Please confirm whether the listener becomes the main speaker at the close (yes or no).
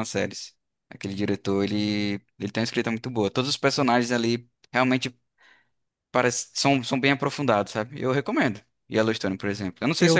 yes